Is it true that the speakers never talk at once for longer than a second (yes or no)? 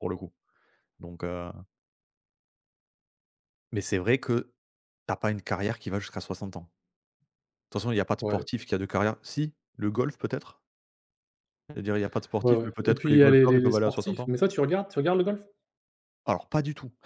no